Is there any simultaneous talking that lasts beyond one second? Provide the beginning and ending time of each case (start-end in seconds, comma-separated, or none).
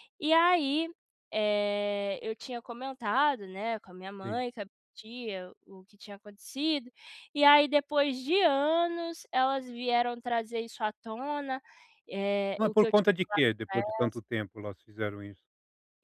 12.6-14.2